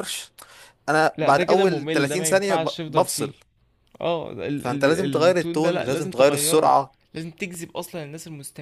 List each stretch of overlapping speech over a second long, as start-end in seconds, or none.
1.2-3.3, 4.5-6.8